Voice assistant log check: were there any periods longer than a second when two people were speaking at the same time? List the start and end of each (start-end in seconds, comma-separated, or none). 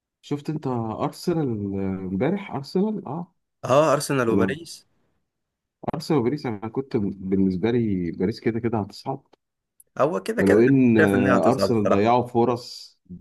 10.4-12.1